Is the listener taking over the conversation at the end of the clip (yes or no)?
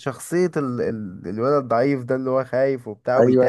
yes